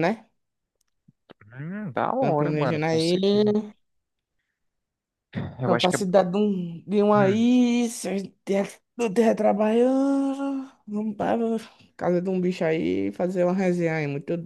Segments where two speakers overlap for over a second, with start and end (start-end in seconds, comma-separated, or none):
2.1-3.5